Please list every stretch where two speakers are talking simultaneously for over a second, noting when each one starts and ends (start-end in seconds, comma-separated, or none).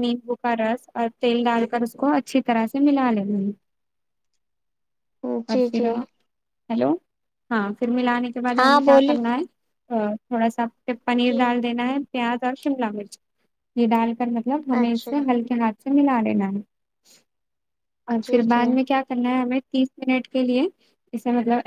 none